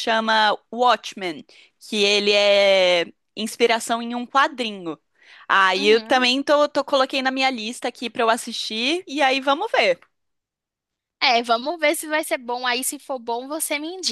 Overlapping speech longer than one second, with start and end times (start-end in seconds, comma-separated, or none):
none